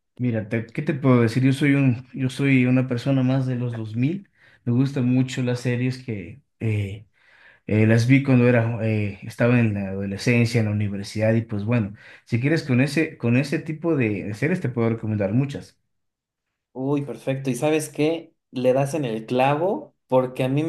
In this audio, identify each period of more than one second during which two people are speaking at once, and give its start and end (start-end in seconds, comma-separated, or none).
none